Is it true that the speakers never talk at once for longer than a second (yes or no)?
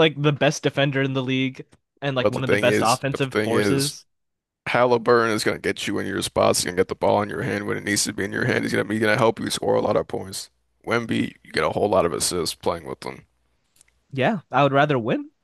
no